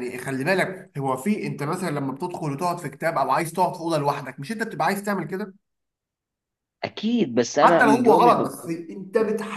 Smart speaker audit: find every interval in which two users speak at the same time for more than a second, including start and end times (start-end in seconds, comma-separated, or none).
7.6-8.9